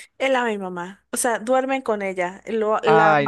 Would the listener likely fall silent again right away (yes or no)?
yes